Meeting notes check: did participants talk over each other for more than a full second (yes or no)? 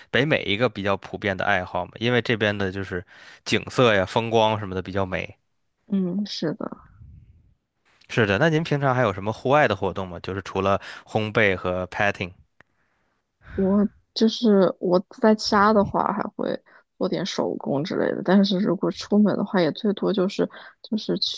no